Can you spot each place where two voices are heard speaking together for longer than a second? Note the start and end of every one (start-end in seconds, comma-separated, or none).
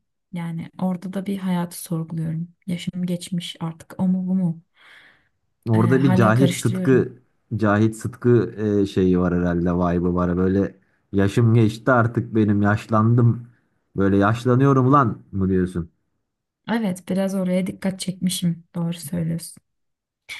5.8-7.1